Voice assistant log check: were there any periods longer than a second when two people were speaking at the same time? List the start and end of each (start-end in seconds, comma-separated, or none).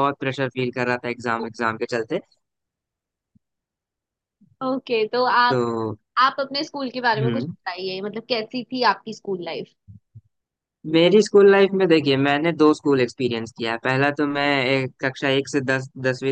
none